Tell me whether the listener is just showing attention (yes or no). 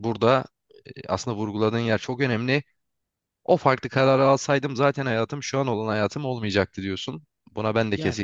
yes